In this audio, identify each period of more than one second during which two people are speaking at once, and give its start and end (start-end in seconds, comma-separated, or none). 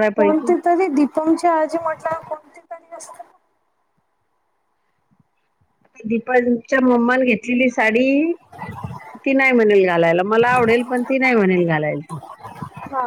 none